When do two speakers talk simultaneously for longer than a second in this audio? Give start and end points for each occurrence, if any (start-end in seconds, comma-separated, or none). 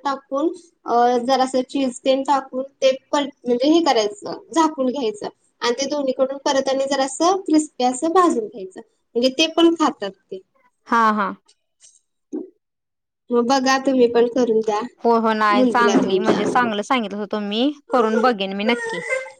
15.5-16.8